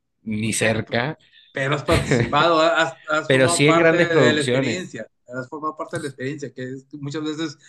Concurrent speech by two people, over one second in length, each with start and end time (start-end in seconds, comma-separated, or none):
3.3-4.9